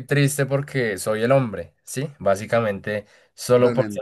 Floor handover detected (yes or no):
no